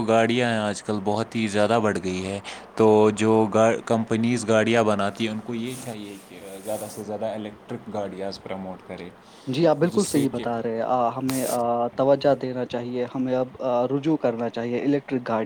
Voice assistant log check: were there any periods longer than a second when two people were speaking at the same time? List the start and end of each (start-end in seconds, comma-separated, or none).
none